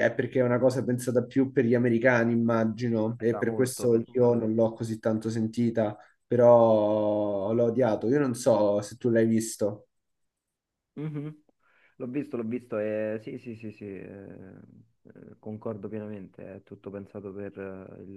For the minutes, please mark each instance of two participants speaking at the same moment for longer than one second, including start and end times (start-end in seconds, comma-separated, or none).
3.2-4.5